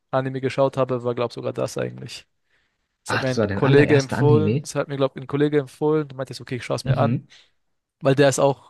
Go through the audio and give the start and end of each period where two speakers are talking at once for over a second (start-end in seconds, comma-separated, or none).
3.1-4.7